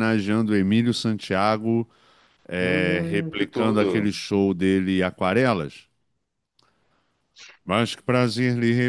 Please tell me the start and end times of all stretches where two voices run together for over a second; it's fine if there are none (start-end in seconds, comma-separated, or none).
2.6-4.1